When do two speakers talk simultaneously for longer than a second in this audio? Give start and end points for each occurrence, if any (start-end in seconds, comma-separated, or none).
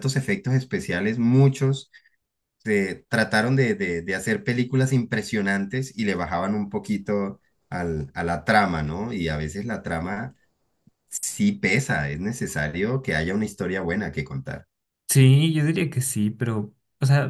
none